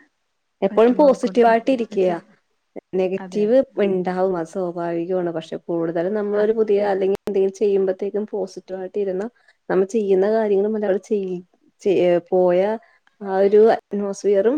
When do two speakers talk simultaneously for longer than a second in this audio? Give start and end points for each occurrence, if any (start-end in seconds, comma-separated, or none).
0.7-2.2